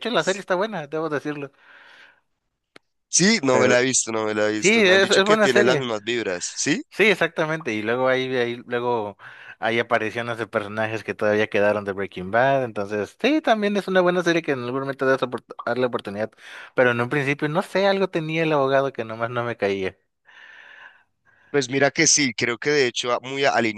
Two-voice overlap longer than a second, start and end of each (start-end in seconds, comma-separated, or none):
4.5-5.9